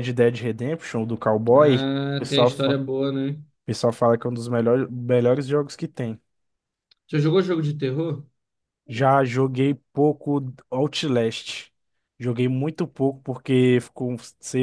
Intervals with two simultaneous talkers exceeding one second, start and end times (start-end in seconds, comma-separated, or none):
1.5-2.8